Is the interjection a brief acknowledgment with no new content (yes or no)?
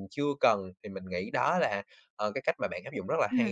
no